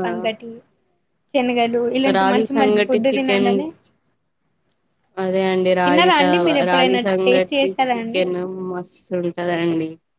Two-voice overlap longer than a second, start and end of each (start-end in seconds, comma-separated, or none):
5.8-8.2